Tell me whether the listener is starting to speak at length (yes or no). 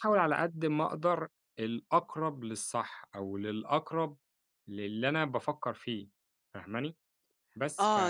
yes